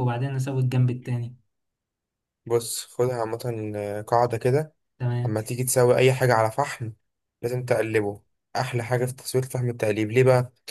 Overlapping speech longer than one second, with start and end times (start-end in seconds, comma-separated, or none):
none